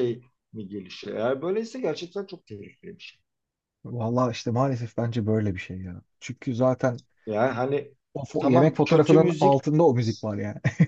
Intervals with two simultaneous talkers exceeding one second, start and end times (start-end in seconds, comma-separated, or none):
8.4-9.6